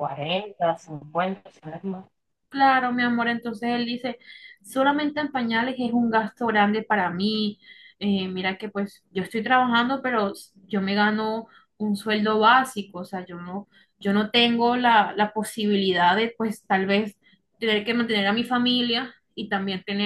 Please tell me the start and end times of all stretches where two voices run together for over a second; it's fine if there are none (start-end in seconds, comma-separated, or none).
none